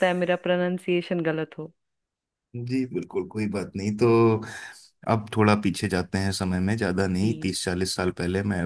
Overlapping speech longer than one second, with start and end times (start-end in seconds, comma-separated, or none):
none